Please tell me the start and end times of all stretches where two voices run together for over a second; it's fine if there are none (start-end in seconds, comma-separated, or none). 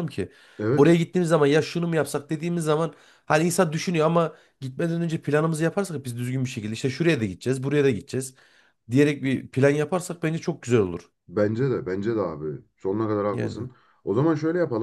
none